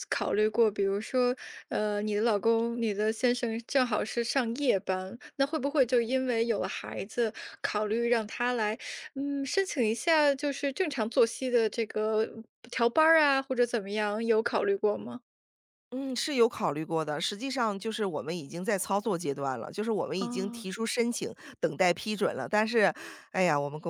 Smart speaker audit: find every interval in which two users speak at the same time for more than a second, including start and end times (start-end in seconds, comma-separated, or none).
none